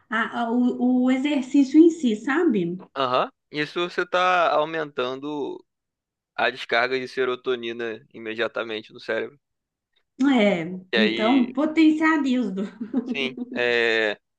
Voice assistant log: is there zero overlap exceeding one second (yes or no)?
yes